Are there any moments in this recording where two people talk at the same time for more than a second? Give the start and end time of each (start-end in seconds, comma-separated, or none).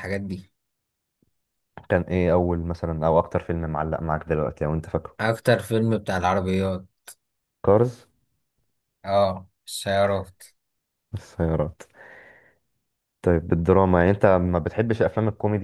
none